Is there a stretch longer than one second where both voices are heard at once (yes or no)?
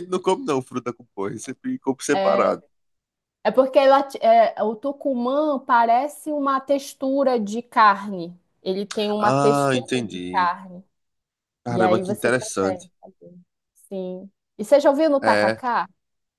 yes